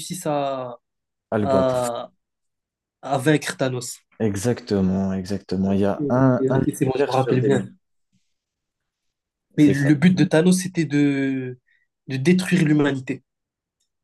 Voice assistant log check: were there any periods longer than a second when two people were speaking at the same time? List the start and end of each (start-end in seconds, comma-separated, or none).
6.0-7.6